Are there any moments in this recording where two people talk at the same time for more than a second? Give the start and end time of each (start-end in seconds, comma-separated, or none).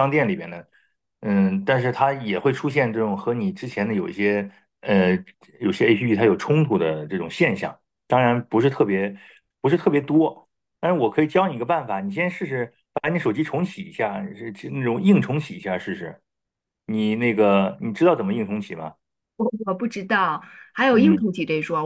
none